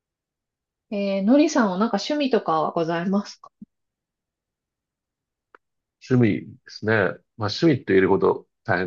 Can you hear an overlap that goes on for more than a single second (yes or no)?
no